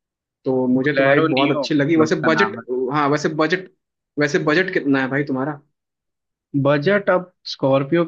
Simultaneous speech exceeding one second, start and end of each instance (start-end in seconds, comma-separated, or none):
0.8-2.6